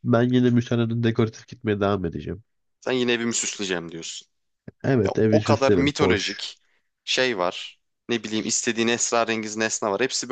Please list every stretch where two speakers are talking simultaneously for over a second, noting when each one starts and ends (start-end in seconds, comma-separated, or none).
5.0-6.5